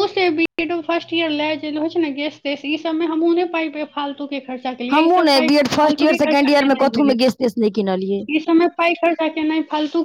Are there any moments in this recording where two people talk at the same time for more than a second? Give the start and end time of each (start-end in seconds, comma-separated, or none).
4.9-7.2